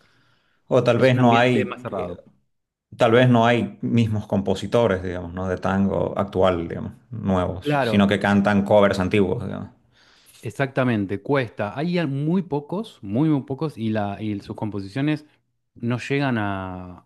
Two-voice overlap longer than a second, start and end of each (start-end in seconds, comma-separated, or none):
1.0-2.2